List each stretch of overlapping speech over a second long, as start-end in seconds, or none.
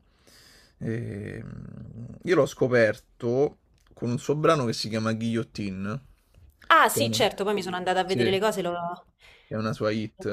none